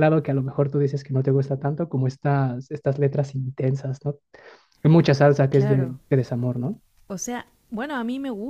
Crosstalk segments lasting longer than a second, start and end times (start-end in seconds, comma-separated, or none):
none